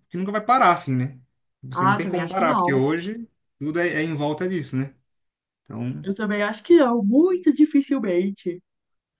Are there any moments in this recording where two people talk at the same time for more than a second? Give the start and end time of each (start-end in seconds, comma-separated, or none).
1.7-3.0